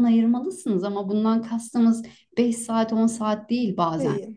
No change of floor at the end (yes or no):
yes